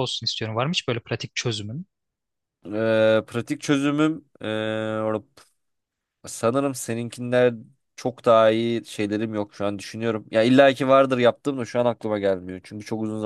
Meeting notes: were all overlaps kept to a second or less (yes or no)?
yes